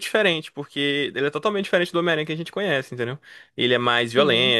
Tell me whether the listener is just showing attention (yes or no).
yes